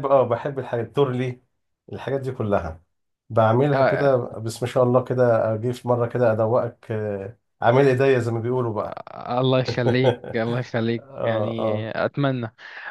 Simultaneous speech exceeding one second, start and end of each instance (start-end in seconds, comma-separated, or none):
9.9-11.9